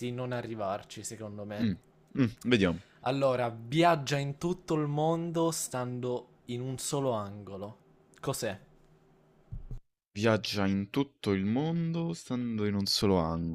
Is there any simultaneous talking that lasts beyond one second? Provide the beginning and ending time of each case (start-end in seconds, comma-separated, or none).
none